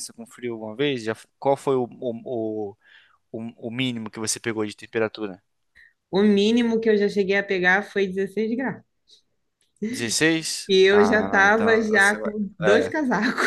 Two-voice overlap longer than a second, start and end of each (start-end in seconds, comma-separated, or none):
10.7-12.9